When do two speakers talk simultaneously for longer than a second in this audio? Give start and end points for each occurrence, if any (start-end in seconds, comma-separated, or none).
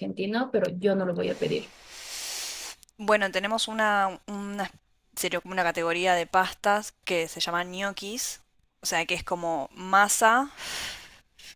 none